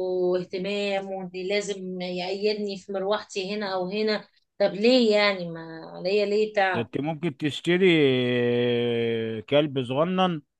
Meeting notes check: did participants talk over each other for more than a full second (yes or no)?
no